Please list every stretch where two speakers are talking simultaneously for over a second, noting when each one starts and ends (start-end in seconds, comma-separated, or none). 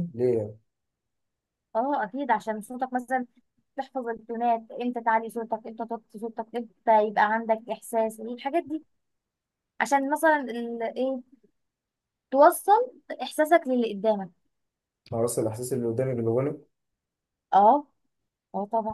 none